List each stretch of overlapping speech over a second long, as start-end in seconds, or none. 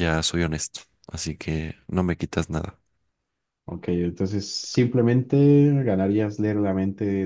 none